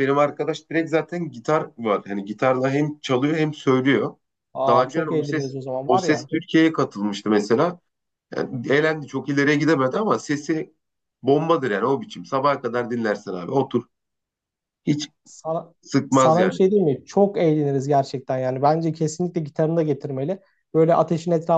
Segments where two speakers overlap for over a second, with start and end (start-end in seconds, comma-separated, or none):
4.7-6.3